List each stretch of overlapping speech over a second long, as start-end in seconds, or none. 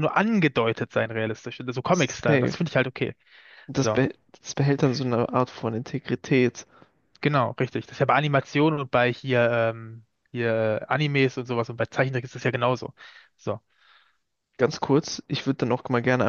none